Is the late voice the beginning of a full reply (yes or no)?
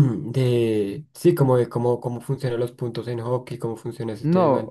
yes